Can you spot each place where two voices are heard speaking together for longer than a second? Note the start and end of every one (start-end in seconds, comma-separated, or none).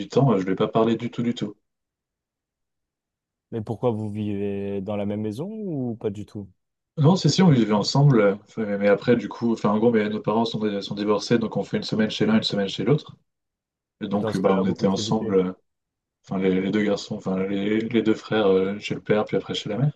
14.1-15.4